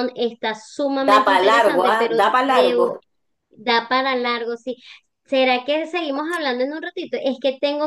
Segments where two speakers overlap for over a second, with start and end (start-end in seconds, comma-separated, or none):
1.1-2.8